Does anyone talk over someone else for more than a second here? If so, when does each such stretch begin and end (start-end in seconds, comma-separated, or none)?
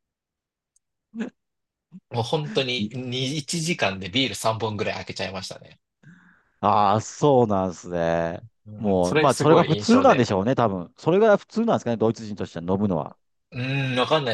8.7-10.3